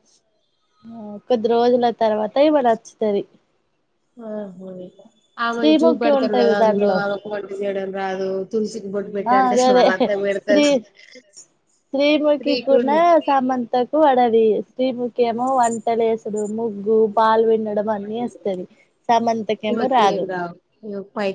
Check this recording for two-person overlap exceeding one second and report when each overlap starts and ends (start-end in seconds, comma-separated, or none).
5.5-7.0